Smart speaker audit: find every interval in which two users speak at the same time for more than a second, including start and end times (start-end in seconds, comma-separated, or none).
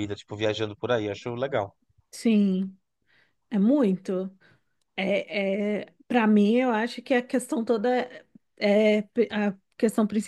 none